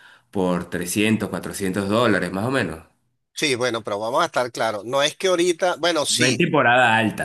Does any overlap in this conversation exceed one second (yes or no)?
no